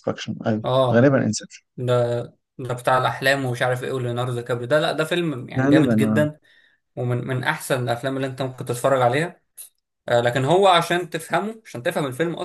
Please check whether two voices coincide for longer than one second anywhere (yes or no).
no